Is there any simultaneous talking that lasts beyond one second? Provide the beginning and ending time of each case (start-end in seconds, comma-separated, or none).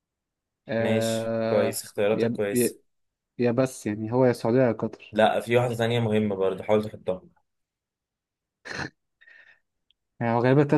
0.8-2.8